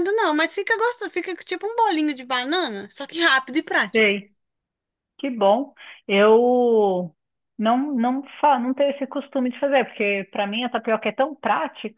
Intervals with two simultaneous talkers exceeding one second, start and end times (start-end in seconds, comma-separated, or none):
none